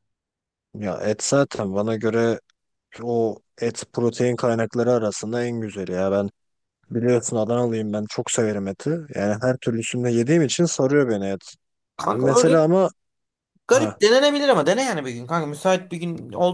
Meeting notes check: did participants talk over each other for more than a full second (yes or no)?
no